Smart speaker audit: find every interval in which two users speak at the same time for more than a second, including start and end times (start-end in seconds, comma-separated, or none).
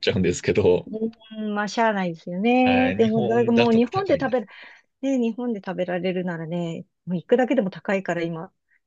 2.6-4.5